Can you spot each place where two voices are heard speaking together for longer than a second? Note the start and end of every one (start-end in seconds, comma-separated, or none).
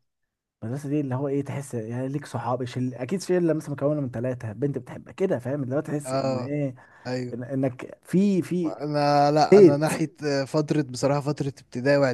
none